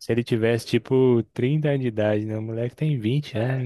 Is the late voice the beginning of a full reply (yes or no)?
yes